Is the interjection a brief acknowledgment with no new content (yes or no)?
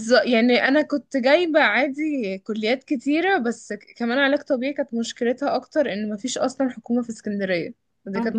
no